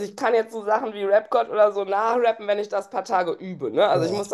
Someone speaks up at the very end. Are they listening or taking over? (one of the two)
listening